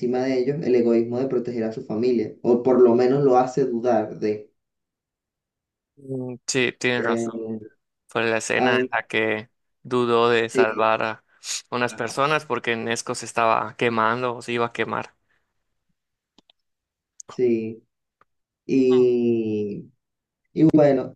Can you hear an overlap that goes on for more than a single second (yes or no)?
no